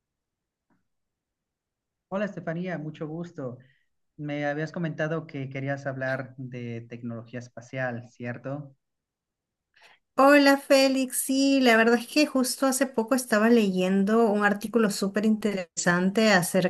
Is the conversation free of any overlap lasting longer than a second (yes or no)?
yes